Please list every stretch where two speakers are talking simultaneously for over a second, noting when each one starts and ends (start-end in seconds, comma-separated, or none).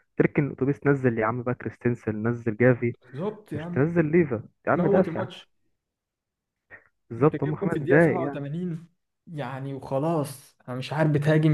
7.2-8.4